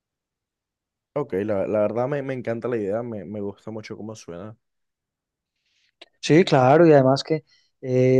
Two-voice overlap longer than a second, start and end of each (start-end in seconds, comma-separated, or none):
none